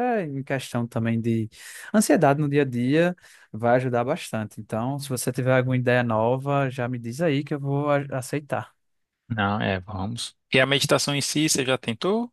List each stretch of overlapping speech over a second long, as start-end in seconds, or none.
none